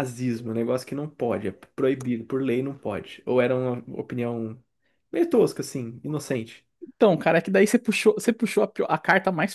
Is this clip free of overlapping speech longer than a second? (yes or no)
yes